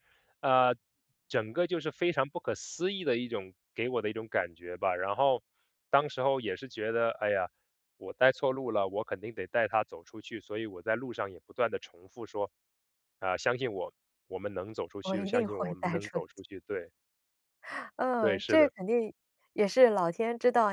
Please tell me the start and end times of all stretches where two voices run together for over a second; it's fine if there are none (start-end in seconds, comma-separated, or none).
15.0-16.4